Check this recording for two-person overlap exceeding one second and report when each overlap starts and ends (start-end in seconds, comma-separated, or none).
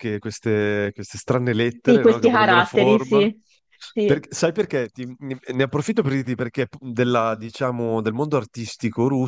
1.8-3.3